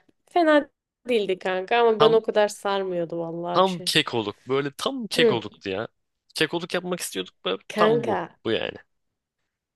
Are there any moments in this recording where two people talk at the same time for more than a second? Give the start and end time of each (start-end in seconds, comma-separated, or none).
none